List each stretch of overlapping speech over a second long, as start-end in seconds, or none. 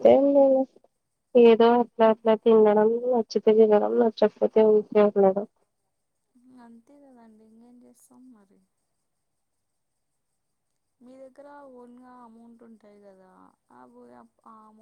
none